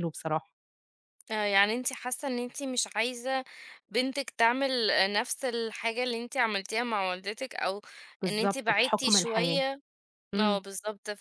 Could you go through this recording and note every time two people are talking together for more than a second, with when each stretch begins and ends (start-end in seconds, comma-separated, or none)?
8.3-9.6